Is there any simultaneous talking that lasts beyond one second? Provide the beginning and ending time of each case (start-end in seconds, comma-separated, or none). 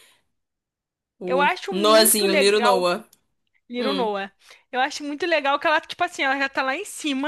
1.2-2.8